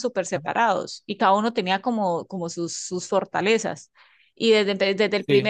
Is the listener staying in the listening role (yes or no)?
yes